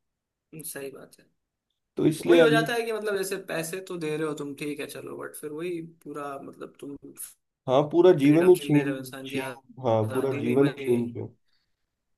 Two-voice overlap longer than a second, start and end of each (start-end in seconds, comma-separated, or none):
8.2-10.9